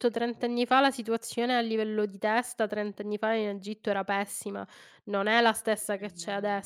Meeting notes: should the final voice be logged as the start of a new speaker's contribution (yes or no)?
no